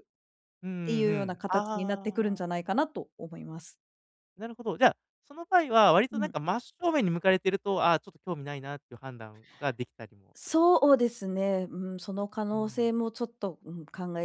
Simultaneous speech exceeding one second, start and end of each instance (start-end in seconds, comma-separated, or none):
0.8-2.4